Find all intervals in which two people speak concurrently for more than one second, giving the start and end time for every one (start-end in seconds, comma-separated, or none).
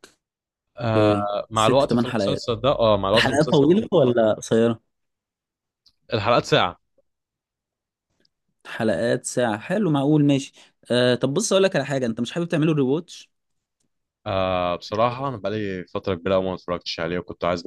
0.9-2.5